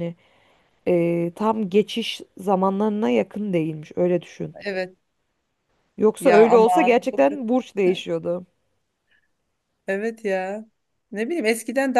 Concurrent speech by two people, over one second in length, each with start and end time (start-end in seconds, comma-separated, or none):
6.2-7.4